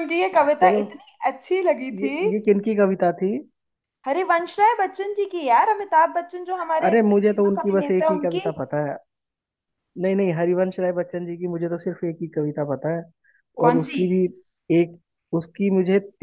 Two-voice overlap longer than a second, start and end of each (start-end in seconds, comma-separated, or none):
6.8-8.5